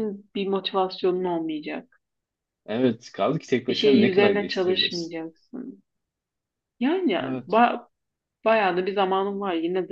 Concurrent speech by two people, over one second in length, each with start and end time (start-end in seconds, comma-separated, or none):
3.7-5.1